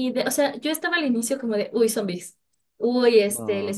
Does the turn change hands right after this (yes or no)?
no